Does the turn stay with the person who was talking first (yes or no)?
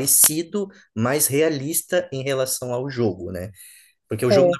yes